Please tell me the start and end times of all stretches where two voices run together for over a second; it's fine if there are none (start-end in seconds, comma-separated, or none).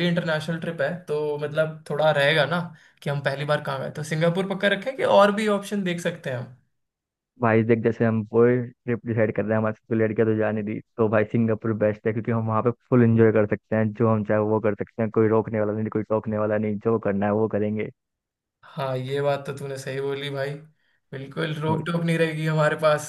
none